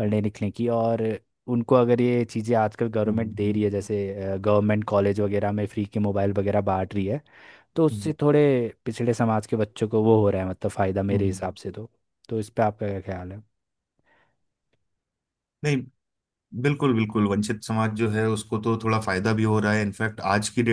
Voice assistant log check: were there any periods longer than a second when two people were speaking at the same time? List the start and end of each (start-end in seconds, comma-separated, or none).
none